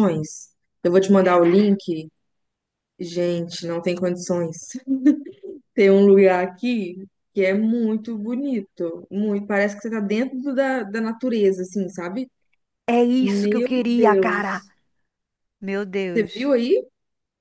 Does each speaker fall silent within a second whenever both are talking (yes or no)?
no